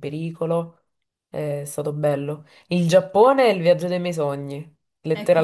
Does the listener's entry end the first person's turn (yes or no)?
yes